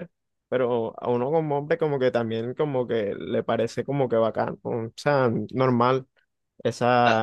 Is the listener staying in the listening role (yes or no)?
no